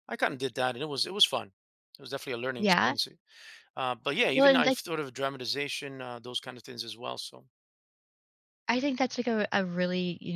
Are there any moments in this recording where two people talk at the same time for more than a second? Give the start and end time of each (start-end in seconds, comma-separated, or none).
none